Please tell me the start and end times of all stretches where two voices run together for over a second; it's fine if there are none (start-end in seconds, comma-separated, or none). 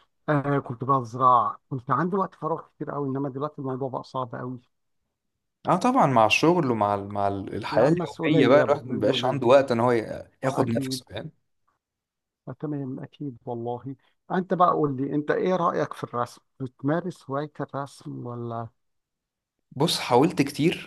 7.7-9.4